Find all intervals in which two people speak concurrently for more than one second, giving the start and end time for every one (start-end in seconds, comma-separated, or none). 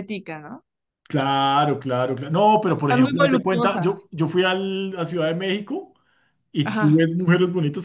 2.8-4.1